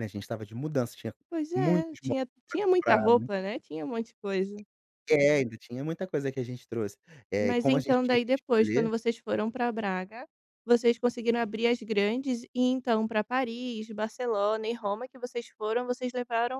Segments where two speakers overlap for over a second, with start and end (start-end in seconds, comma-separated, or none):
1.5-3.3, 7.4-8.9